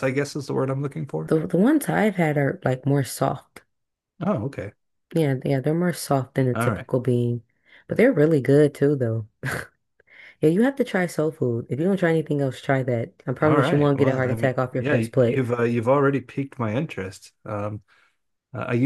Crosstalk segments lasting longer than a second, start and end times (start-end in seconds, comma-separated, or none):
13.4-15.4